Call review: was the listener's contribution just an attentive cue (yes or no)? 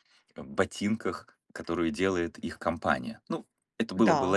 no